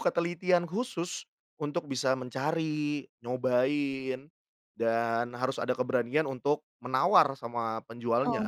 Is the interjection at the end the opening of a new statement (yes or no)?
yes